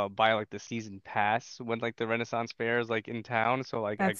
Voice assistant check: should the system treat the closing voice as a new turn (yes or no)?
no